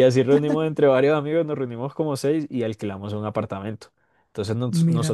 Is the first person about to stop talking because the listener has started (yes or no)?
no